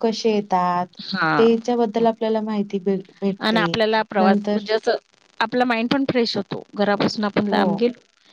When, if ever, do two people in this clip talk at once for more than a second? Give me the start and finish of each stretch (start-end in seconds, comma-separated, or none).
none